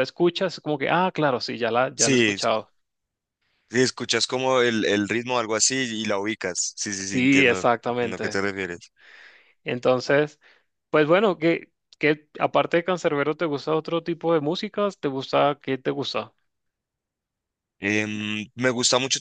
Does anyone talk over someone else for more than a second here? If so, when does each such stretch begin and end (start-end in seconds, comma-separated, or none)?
7.0-8.4